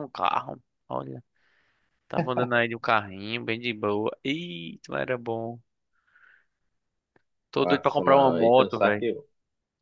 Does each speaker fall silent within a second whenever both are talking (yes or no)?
no